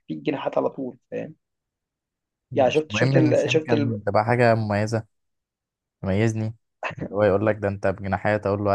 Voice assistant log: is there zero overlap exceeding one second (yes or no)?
no